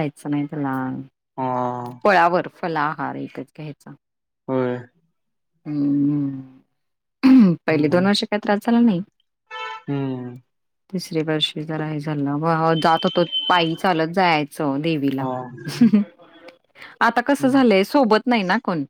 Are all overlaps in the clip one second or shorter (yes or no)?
yes